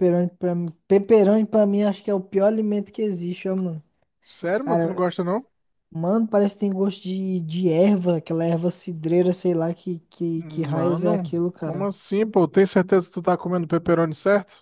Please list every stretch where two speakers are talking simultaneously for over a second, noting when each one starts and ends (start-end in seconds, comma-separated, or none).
10.3-11.9